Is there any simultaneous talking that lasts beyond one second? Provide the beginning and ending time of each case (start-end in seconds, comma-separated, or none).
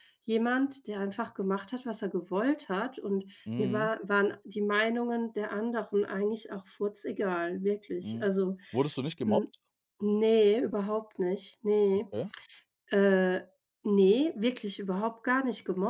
none